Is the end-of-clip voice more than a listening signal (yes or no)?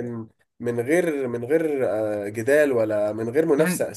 yes